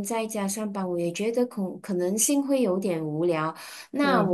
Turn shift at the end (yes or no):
no